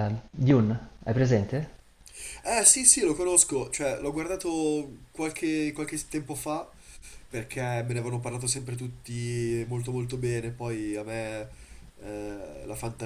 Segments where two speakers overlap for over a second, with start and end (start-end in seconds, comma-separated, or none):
none